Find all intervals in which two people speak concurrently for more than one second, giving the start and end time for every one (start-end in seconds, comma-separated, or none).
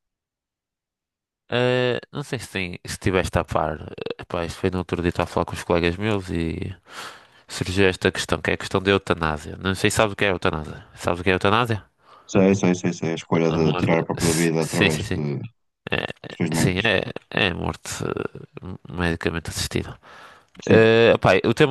13.5-15.2